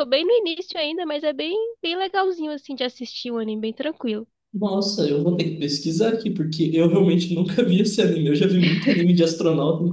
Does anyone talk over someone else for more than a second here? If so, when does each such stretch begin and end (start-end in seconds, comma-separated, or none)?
none